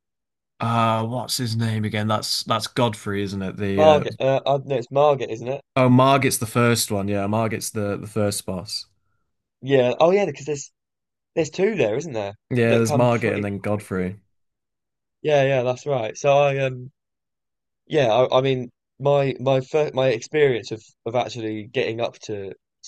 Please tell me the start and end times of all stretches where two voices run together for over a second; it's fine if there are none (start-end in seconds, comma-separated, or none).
12.5-14.2